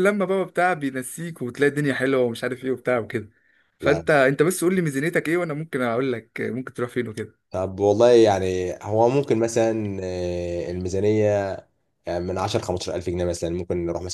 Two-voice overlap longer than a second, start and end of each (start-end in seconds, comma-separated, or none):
none